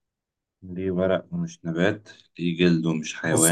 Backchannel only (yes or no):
no